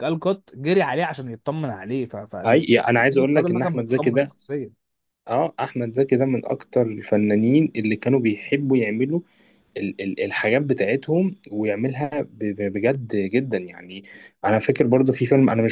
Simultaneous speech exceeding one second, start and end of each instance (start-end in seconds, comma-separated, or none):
3.1-4.3